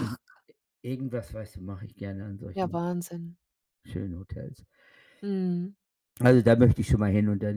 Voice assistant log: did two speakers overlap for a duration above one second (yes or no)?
no